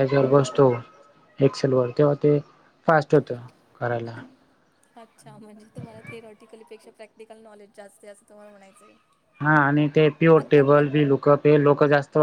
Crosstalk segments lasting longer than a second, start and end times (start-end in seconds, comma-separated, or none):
none